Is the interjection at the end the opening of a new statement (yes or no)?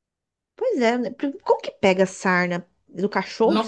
yes